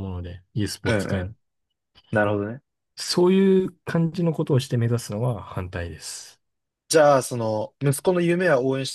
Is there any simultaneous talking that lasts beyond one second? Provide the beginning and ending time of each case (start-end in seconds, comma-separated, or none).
none